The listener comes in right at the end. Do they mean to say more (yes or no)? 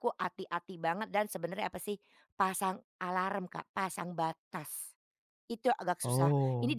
no